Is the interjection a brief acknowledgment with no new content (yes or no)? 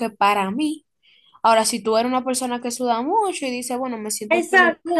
no